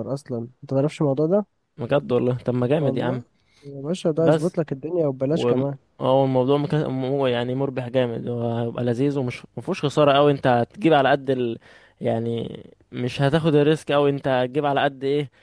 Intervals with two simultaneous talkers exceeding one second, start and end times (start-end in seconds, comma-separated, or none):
none